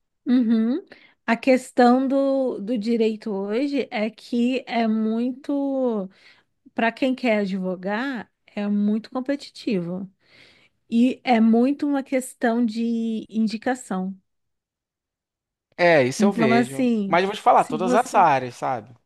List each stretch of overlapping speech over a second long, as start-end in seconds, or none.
16.2-18.3